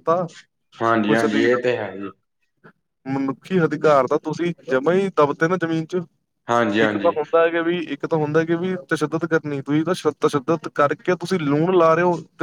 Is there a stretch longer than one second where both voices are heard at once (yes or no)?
no